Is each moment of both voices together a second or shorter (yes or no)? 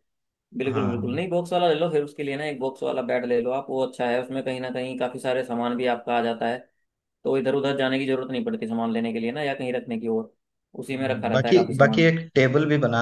no